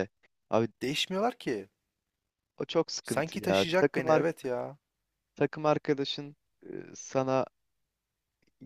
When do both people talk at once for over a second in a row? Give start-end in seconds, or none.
3.0-4.2